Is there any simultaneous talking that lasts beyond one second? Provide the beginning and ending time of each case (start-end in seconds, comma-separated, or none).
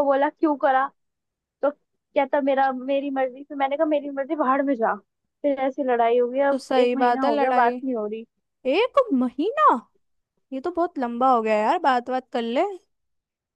6.5-7.8